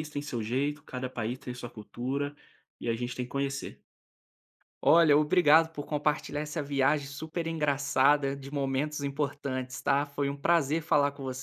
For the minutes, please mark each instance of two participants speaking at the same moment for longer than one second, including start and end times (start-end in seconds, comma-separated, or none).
none